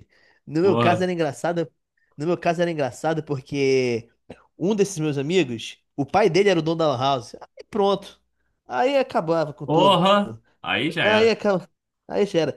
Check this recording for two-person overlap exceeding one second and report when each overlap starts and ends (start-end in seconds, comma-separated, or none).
none